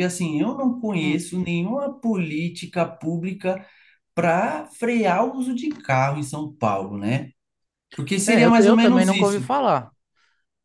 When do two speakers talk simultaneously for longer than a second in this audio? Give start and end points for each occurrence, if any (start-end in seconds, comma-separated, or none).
8.2-9.5